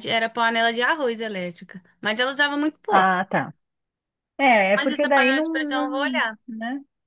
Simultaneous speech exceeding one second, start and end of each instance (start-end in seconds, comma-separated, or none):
4.8-6.4